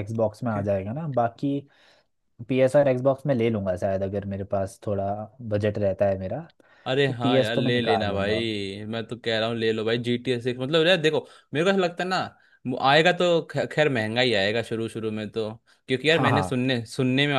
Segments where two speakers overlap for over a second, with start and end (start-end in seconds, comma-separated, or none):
7.1-8.4